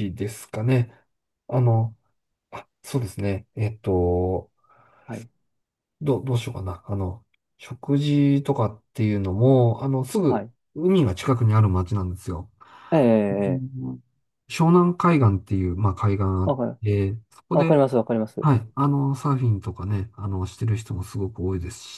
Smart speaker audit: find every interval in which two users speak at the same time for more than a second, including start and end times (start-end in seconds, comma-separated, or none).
none